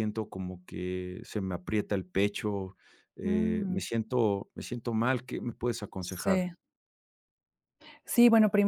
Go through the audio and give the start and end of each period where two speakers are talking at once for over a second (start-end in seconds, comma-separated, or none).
none